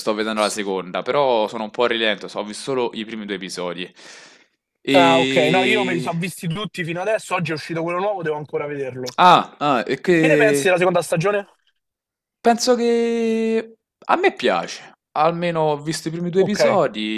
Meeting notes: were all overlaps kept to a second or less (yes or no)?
no